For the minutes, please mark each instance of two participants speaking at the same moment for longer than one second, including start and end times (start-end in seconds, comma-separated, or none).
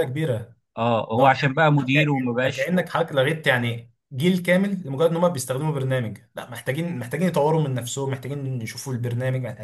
1.1-2.7